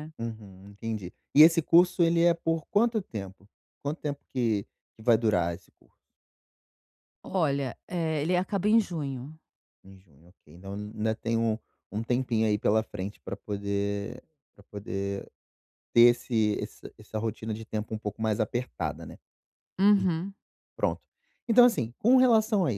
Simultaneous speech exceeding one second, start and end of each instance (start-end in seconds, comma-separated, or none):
none